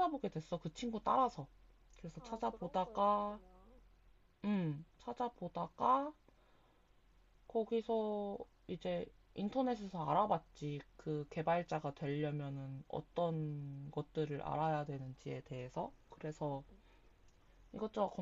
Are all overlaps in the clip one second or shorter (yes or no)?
no